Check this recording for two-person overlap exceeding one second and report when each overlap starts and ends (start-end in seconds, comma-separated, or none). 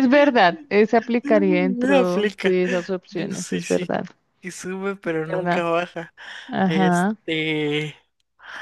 1.2-2.6